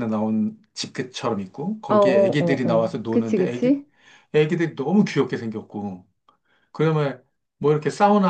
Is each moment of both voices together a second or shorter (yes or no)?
no